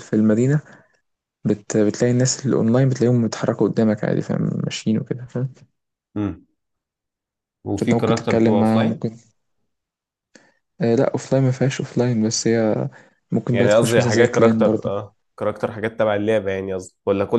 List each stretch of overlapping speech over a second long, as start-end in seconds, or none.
7.8-9.1, 13.5-15.1